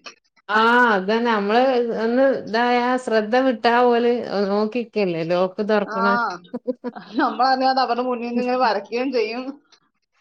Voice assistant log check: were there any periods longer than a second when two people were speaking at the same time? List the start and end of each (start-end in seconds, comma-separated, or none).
none